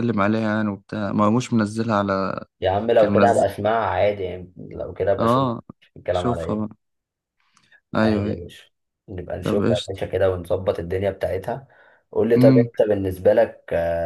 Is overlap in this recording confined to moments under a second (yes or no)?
yes